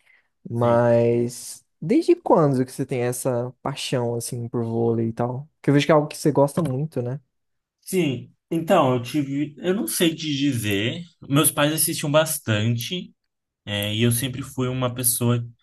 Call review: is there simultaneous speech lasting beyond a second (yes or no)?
no